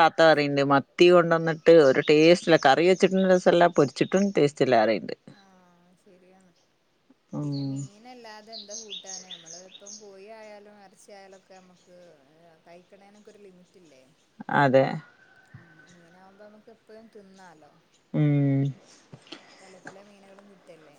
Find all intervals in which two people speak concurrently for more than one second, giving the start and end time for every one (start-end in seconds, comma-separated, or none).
none